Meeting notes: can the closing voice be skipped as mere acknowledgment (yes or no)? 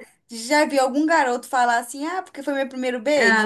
no